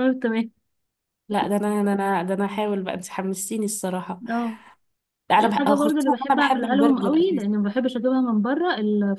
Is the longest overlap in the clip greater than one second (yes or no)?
yes